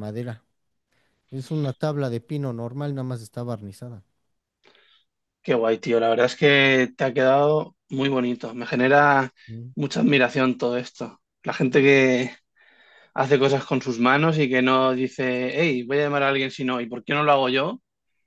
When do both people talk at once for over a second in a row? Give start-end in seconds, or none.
none